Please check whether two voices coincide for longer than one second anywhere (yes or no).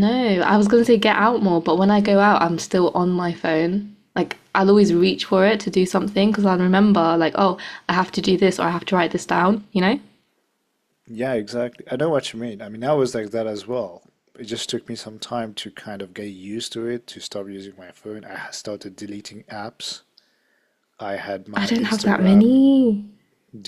yes